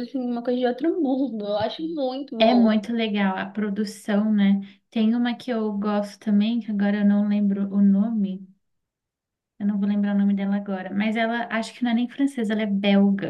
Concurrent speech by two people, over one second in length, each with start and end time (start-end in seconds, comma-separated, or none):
none